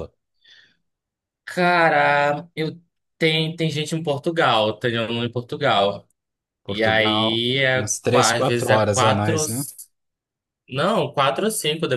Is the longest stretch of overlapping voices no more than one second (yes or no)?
no